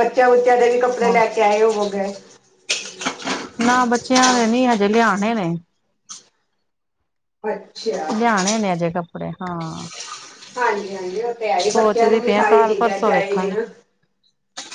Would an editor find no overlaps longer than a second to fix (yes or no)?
no